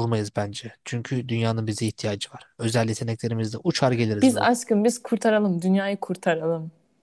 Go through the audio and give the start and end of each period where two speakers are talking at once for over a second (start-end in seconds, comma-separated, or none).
none